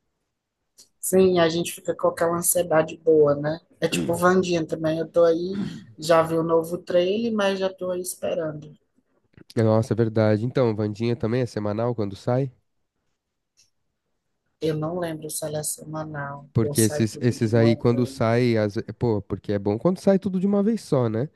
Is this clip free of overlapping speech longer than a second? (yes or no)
no